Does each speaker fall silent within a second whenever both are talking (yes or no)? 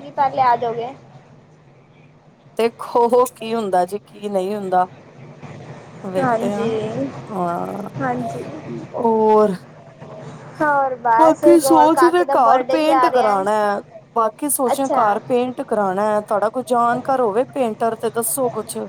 no